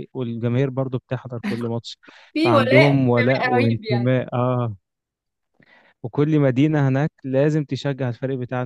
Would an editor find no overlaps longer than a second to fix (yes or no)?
no